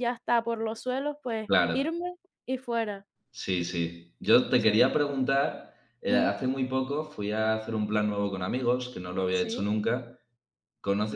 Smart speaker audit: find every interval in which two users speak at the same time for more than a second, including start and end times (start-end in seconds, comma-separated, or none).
none